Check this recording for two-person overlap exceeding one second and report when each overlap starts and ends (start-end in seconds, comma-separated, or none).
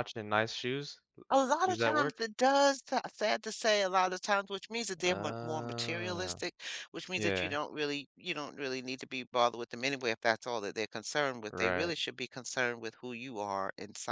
5.0-6.4